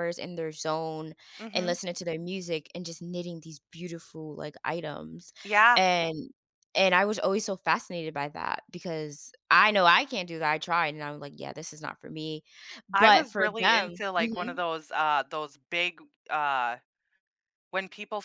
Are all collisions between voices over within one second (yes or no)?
no